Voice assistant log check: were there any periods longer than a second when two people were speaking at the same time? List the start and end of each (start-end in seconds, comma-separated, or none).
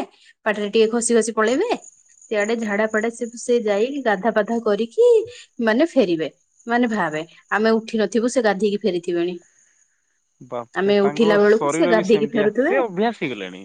10.8-12.7